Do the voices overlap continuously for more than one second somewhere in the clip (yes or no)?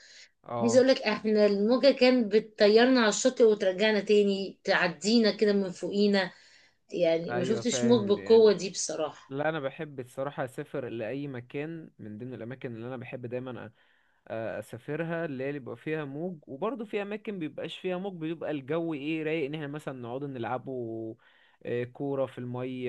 yes